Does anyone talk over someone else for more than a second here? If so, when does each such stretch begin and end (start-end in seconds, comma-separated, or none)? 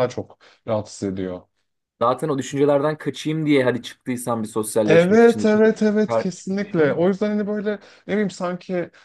4.9-7.0